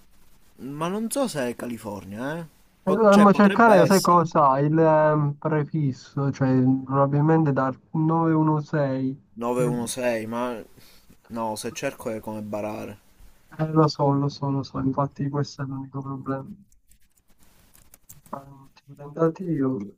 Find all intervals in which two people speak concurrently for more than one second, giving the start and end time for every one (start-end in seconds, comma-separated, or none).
2.8-4.2